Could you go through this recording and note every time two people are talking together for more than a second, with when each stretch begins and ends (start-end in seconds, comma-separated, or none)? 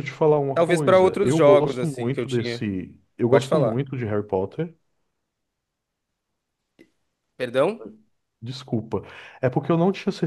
0.5-2.6